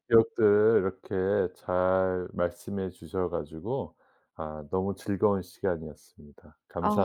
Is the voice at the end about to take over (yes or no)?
yes